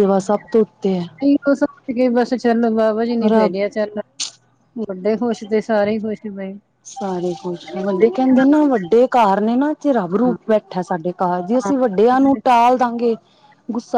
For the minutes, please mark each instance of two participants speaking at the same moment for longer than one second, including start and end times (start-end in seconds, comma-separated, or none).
none